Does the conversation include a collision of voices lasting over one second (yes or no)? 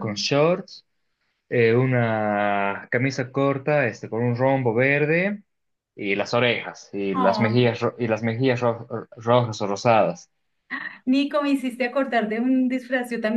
no